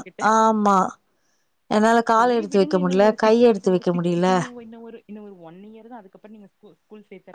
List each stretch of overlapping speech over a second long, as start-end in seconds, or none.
2.1-4.2